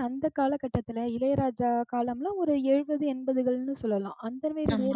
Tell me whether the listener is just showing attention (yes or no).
yes